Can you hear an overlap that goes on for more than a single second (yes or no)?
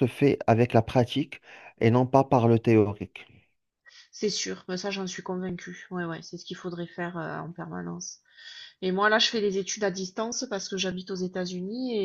no